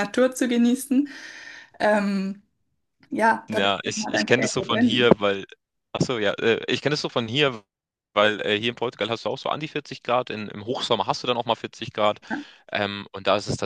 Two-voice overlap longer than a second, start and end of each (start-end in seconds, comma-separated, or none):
3.5-5.1